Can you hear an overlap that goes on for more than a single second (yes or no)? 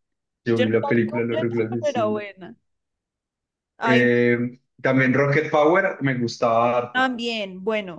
yes